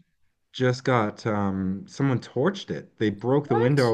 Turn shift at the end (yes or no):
no